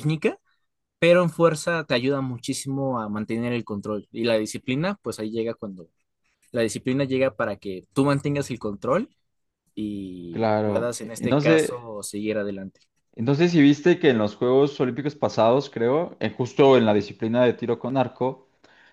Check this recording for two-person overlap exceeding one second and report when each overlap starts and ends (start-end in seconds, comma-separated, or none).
10.3-11.9